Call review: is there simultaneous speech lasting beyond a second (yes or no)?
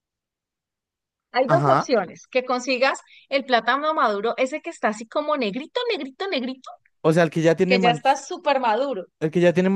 no